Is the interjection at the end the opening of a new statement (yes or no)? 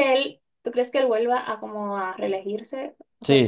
yes